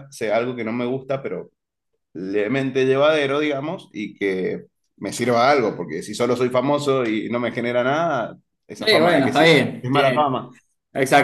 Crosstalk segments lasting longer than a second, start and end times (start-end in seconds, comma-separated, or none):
8.8-10.4